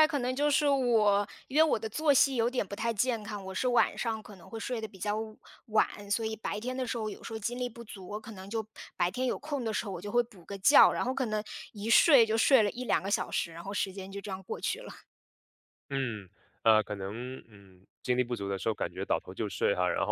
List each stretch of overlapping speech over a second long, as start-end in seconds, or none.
none